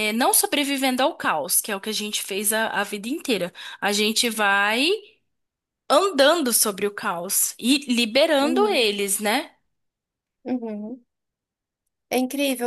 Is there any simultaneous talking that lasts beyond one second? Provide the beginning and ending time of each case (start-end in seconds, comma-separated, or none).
none